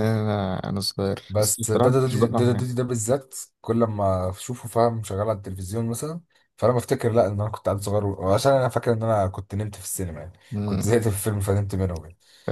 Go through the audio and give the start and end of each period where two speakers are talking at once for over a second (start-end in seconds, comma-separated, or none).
1.3-2.7